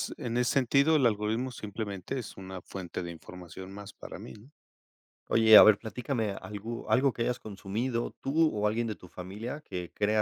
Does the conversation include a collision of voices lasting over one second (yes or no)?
no